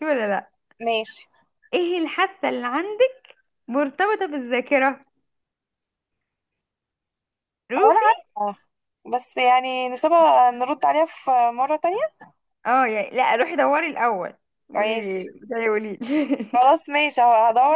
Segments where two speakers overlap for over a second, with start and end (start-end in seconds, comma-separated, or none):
none